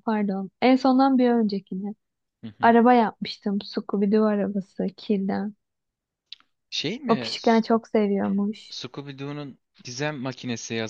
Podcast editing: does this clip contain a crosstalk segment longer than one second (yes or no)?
no